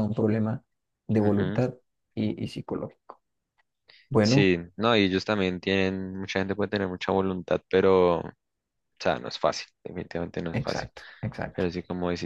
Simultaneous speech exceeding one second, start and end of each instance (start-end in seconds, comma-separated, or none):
none